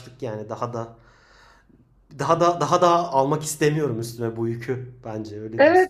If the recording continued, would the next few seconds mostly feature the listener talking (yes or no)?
yes